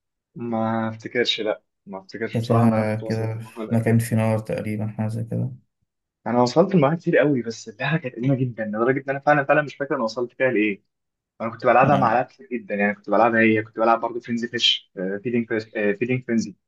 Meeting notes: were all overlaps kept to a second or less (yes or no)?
no